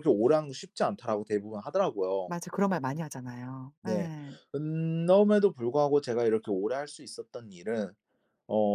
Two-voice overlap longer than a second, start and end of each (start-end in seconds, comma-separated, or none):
none